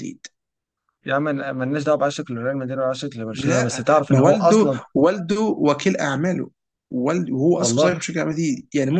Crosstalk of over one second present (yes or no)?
yes